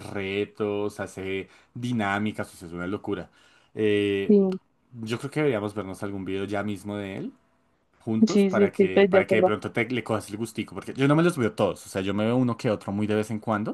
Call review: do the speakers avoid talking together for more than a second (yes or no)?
no